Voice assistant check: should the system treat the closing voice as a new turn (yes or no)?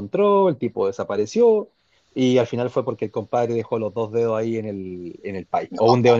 no